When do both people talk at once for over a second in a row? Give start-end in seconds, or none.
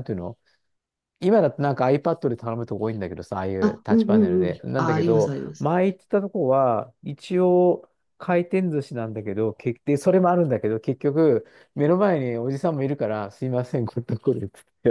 3.6-5.7